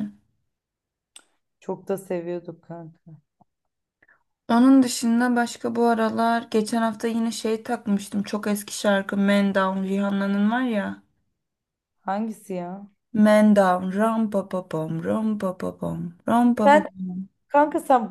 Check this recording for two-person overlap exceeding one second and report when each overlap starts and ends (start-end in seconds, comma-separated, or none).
none